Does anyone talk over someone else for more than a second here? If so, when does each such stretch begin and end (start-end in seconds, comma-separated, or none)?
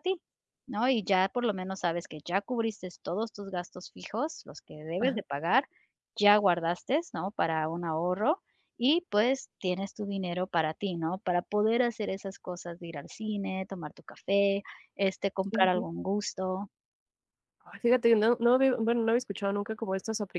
none